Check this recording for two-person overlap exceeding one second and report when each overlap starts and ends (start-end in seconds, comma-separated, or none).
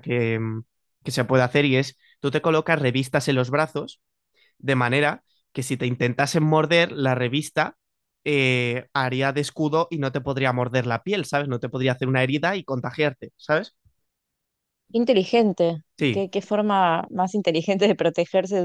none